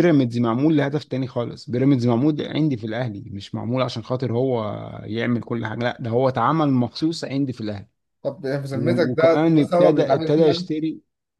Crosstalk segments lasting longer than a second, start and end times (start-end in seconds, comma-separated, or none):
8.7-10.7